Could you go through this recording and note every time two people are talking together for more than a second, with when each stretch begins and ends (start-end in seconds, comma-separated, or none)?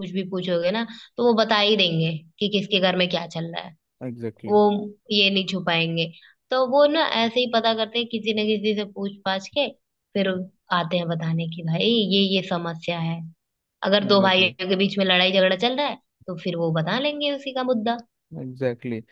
none